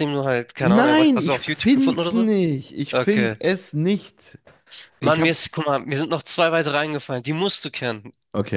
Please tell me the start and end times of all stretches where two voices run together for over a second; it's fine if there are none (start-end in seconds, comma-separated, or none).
0.6-2.2